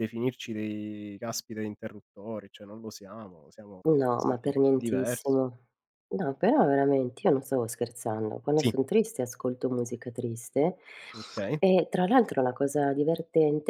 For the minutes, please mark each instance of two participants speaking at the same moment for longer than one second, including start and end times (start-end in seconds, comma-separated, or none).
3.9-5.4